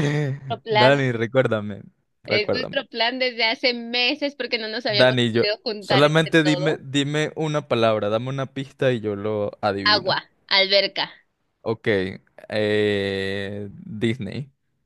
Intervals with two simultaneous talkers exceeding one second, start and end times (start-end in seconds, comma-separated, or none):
4.9-6.8